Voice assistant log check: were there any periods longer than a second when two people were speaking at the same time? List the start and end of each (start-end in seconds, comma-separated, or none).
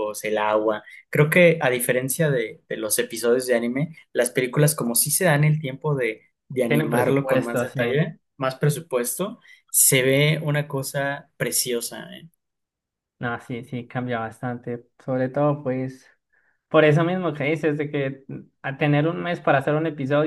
6.7-7.9